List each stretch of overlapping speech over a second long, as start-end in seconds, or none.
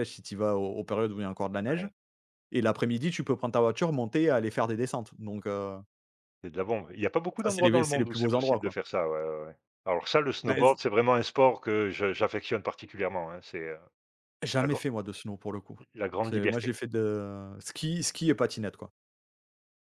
7.4-8.8